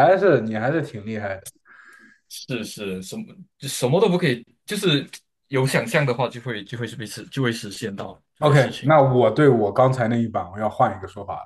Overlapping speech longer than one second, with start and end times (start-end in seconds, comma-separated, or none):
none